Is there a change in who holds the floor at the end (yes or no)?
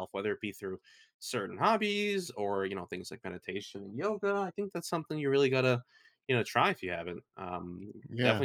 no